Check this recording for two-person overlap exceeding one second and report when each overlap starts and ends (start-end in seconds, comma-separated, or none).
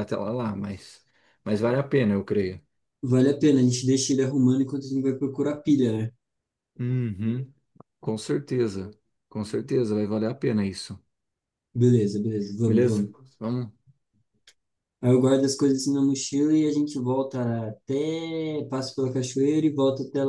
none